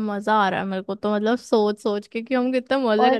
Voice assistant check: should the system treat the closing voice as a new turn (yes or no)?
no